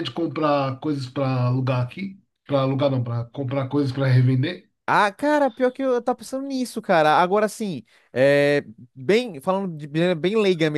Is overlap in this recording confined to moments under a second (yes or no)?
yes